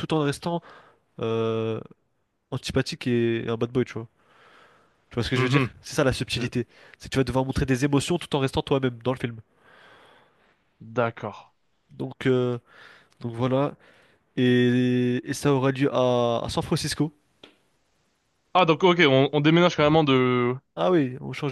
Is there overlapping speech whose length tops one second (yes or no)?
no